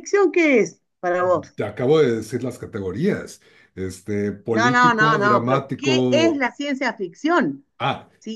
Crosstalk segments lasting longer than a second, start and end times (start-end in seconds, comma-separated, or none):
4.6-6.4